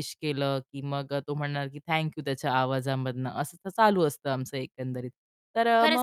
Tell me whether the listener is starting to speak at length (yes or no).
yes